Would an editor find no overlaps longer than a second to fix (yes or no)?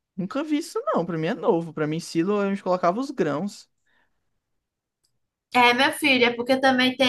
yes